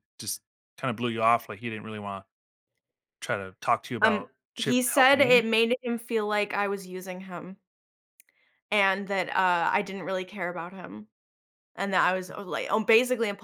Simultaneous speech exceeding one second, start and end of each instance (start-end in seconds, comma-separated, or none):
4.0-5.4